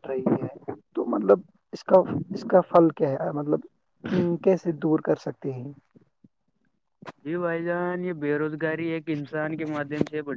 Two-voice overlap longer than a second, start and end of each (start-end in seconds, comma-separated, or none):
none